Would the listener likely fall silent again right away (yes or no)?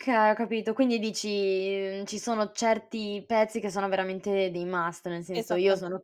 yes